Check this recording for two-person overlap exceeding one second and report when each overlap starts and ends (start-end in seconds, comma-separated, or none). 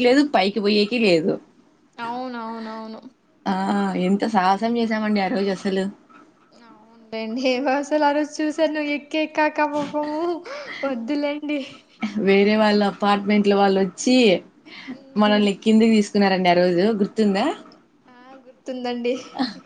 none